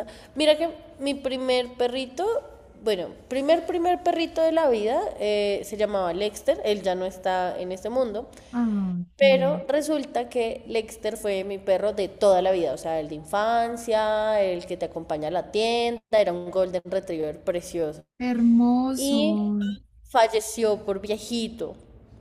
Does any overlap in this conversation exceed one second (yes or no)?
no